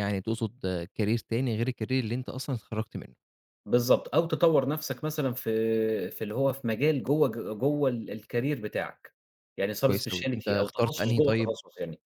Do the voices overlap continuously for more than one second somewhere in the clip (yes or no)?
yes